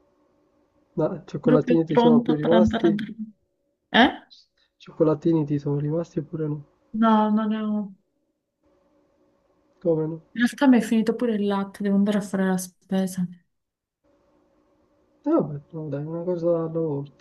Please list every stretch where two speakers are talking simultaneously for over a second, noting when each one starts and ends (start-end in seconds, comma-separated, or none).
1.4-3.0